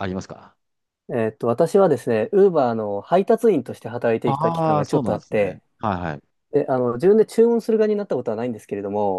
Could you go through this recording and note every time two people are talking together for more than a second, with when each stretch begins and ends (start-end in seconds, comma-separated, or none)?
4.2-5.6